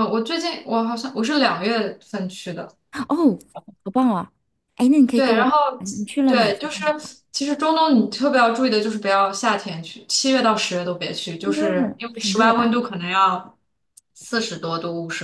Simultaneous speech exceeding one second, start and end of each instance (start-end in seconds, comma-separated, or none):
11.4-12.7